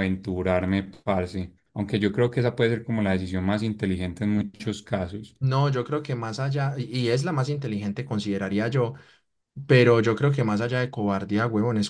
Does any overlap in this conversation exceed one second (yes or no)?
no